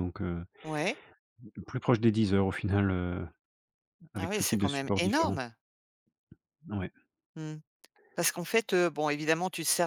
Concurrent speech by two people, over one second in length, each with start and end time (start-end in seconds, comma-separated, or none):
4.2-5.4